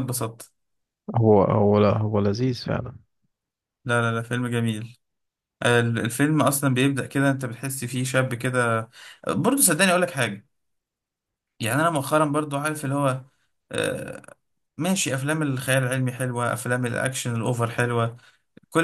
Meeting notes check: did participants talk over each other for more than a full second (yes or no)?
no